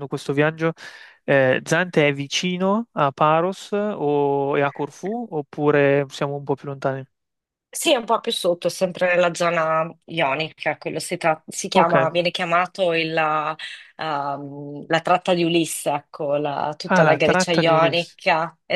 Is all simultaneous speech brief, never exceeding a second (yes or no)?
no